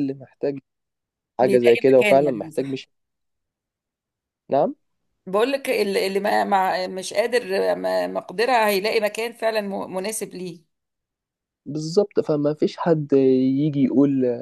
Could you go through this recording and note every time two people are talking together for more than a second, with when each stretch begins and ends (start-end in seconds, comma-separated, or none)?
1.4-2.8